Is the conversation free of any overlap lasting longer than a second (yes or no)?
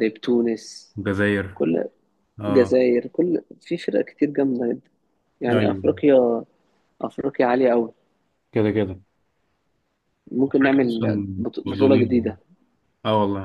no